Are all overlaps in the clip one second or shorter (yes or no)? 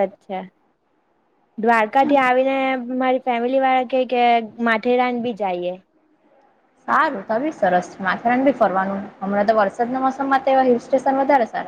yes